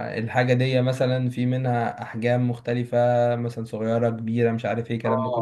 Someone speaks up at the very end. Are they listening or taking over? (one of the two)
taking over